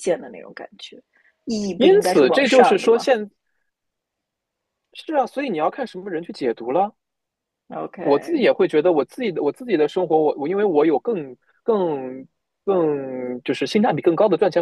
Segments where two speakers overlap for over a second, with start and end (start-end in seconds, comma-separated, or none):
1.8-3.1